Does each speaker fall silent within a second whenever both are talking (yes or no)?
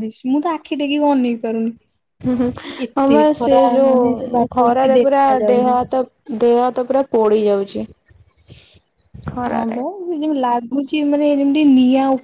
no